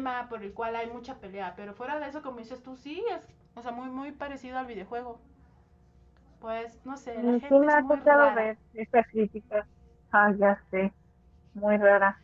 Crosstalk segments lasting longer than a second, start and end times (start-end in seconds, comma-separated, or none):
7.1-8.5